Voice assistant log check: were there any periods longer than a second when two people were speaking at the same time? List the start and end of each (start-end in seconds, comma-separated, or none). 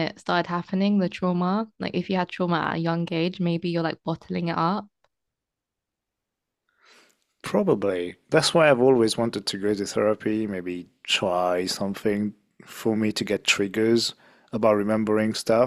none